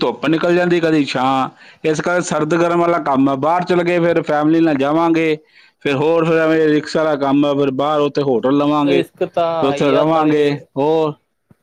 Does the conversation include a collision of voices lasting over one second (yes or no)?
yes